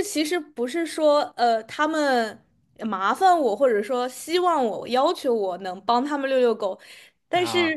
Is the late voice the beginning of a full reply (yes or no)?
no